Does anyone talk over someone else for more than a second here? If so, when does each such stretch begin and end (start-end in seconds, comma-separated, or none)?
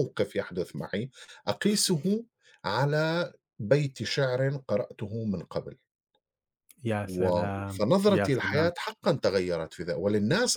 7.0-8.7